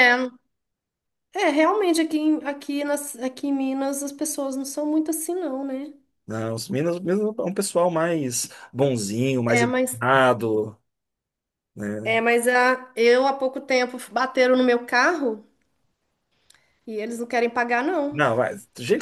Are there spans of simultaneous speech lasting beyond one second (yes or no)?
no